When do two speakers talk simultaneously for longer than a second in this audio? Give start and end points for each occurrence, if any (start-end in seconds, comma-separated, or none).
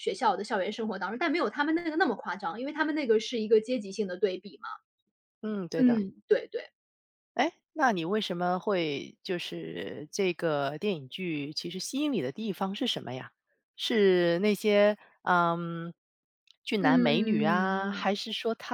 16.8-18.0